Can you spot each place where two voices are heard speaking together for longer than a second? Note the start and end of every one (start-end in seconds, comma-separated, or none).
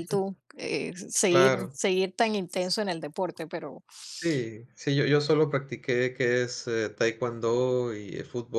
none